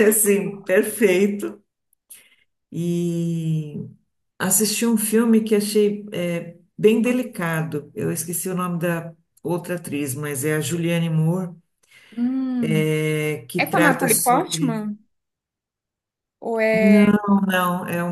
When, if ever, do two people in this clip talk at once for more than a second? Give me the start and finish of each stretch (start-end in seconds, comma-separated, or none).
13.6-14.8